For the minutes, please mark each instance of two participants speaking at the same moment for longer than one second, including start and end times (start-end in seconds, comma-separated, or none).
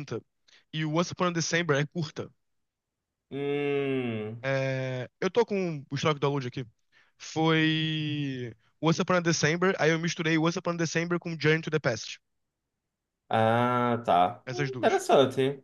none